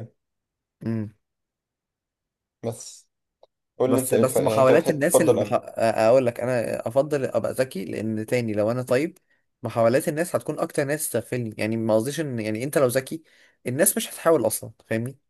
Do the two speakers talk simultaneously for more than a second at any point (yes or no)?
yes